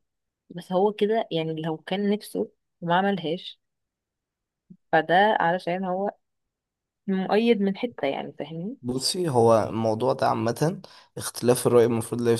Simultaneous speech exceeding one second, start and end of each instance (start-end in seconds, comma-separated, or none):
none